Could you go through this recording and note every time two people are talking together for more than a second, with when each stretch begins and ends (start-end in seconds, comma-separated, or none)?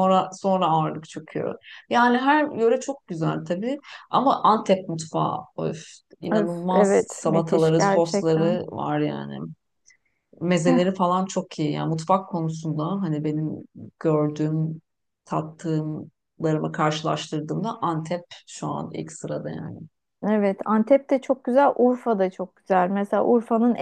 6.3-8.6